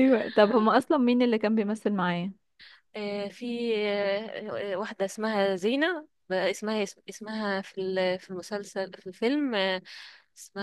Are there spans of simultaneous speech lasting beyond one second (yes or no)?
no